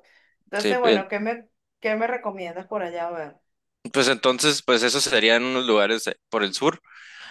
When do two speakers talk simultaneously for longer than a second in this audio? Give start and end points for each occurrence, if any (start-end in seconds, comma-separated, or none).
none